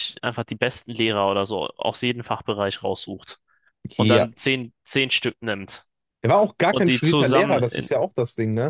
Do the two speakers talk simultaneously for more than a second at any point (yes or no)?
yes